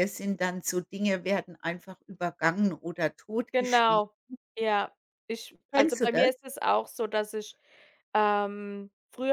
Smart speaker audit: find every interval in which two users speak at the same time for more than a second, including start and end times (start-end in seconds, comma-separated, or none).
none